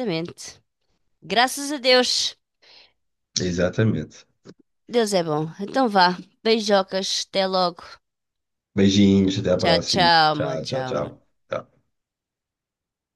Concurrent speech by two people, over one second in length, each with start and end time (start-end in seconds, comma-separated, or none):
9.6-11.1